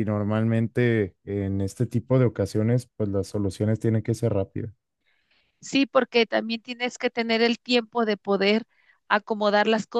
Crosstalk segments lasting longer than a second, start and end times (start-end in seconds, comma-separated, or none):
none